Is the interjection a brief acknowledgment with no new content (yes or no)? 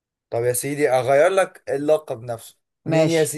yes